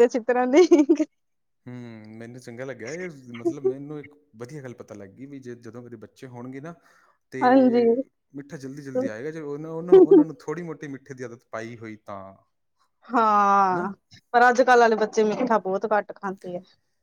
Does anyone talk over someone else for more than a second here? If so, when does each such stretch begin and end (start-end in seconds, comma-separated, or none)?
none